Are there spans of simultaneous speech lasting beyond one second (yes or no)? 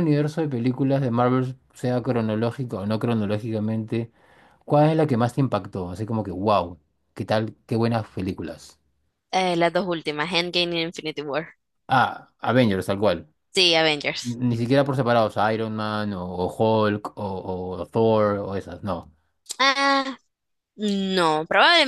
no